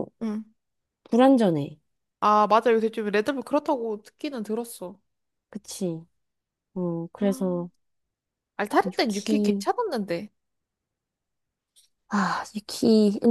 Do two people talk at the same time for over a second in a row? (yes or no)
no